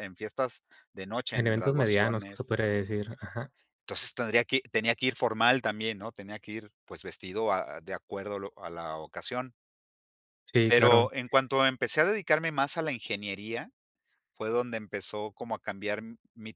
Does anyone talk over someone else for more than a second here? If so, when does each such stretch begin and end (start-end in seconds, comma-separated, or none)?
1.3-2.6